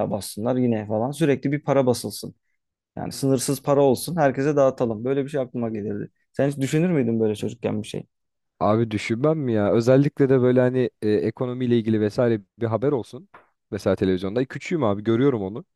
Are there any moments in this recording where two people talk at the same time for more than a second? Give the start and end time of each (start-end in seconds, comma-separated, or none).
none